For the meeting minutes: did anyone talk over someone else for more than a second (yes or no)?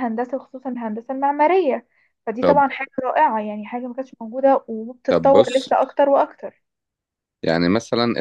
no